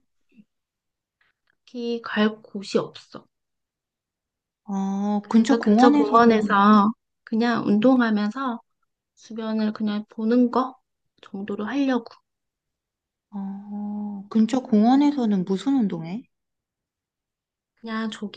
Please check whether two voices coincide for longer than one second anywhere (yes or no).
yes